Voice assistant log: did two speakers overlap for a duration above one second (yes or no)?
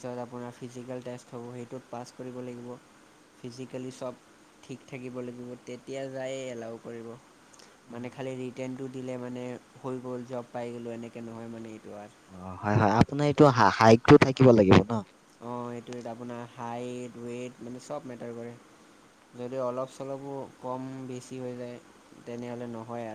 no